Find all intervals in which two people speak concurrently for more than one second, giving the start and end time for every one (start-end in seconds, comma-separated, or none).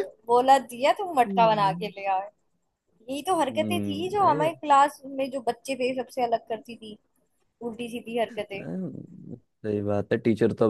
none